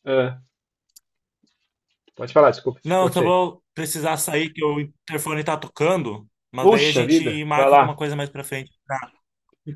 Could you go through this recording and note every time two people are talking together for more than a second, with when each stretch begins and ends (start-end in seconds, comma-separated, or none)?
6.6-8.0